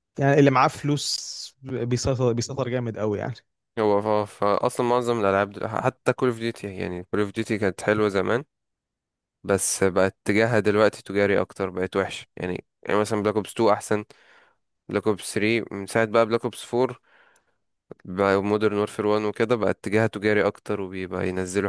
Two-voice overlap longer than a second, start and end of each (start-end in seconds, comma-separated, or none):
none